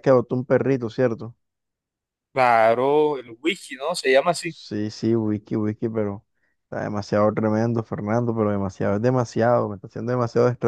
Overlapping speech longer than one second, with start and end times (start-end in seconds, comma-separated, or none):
none